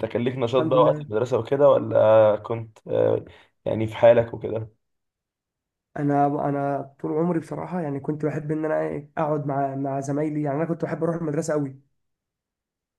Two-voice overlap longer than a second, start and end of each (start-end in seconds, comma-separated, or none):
none